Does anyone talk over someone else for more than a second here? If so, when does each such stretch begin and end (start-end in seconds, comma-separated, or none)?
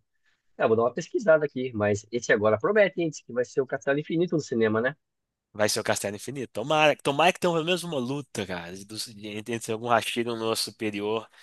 none